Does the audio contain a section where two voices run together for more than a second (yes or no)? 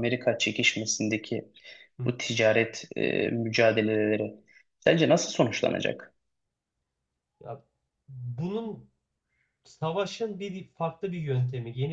no